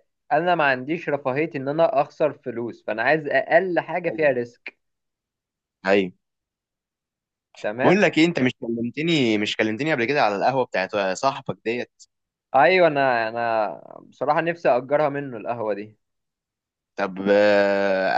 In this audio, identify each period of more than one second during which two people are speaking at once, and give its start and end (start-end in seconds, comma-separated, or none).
none